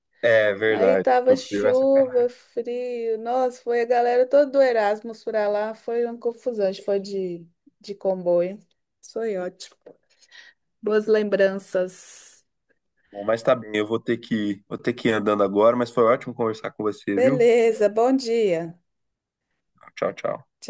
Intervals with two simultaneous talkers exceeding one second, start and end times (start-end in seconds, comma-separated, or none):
0.7-2.3